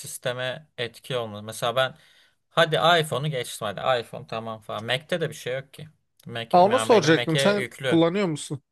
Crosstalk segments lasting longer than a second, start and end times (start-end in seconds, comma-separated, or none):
6.5-8.0